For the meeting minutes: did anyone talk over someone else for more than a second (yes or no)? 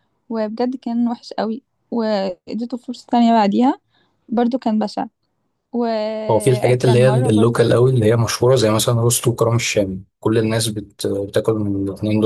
yes